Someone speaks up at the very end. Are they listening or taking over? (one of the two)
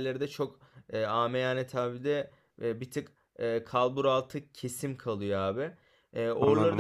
listening